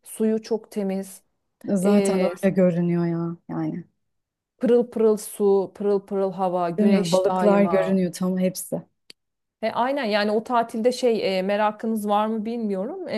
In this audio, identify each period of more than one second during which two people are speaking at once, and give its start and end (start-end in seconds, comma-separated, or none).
6.8-8.0